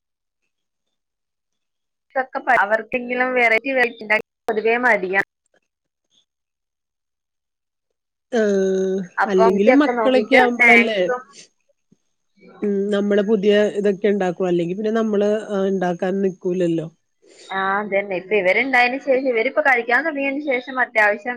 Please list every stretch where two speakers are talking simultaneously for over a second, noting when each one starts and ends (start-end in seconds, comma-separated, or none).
9.2-11.0